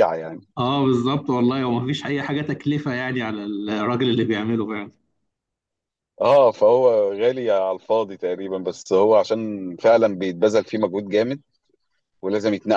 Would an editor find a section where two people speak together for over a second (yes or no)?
no